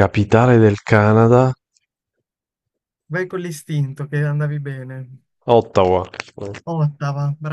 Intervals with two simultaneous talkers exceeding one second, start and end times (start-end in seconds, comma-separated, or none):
none